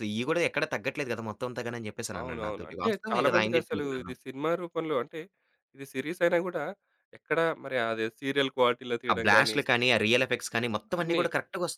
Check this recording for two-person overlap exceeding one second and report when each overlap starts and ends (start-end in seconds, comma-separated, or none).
2.2-4.1